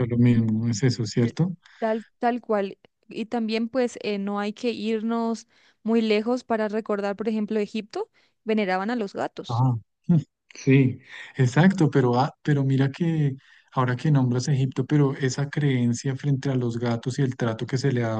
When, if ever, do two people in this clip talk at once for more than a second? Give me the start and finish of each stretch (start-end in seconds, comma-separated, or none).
none